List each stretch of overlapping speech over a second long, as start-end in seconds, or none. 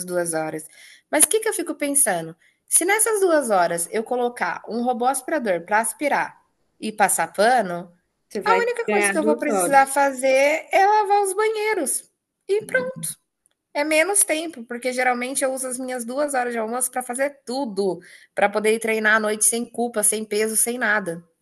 8.4-9.9